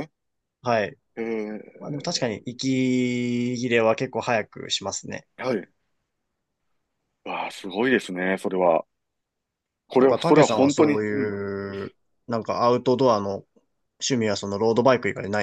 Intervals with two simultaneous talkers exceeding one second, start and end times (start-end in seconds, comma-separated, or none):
10.0-11.3